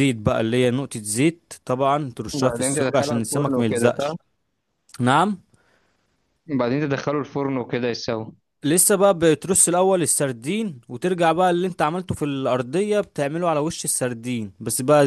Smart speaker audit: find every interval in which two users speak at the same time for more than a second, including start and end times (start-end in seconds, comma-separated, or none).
2.3-4.1